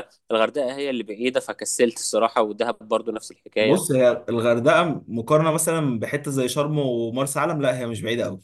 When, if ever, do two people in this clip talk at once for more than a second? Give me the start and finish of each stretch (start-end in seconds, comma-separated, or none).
none